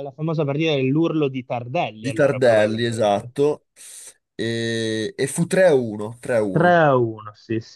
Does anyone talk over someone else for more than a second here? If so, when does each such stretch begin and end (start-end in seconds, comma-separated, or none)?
2.0-3.3